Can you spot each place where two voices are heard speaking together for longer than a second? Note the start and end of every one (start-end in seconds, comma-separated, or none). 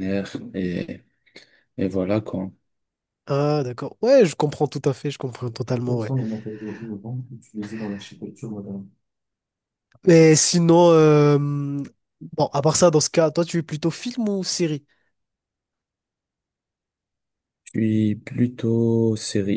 none